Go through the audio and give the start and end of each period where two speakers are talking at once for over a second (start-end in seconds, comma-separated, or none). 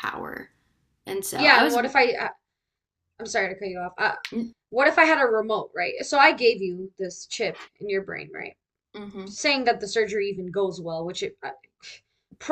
none